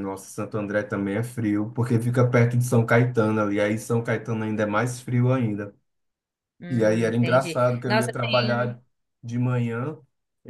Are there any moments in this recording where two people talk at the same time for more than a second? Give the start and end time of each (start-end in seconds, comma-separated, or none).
6.7-8.8